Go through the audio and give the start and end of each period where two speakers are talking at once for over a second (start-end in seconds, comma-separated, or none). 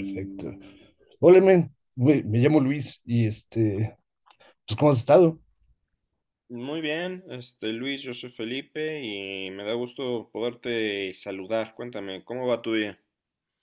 none